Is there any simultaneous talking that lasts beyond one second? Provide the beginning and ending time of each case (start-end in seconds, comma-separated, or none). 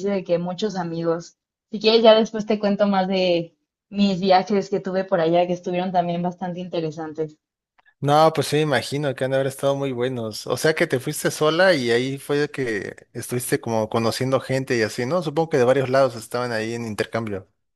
none